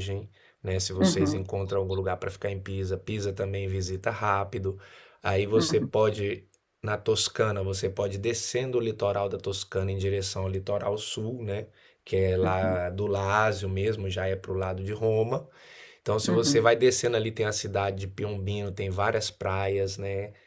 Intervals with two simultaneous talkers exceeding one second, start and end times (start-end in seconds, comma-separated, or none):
none